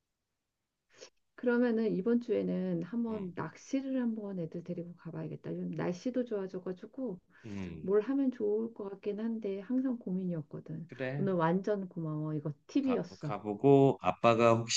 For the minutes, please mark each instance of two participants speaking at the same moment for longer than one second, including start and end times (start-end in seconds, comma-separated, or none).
none